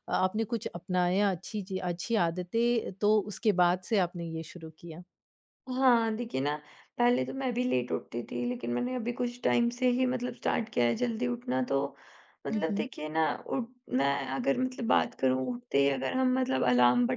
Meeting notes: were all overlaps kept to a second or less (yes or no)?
yes